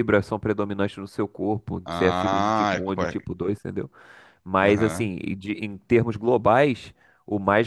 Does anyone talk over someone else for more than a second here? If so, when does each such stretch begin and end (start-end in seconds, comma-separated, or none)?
1.8-3.2